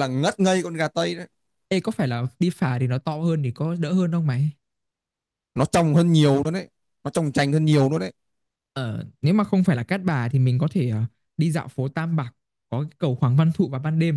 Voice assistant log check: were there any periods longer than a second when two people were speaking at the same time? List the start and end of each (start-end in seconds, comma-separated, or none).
none